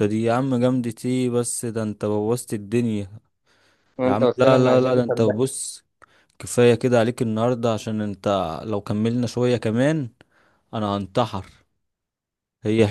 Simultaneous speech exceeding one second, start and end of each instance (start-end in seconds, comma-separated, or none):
4.0-5.5